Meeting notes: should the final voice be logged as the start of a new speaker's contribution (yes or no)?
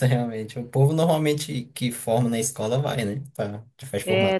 yes